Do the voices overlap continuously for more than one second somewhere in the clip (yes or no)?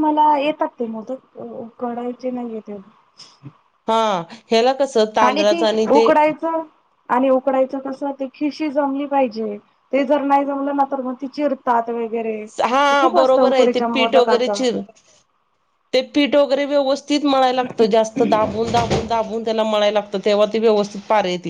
yes